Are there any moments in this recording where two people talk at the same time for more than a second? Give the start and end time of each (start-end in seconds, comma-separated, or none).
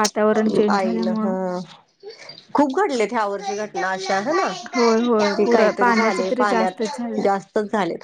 5.3-7.2